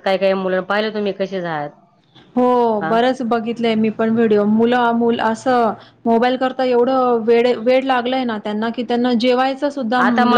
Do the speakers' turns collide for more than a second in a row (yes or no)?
no